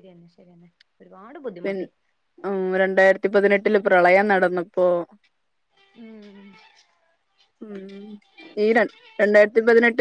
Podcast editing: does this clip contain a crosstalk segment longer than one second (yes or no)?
no